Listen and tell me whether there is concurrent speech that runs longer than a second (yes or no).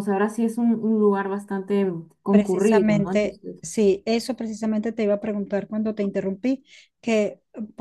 yes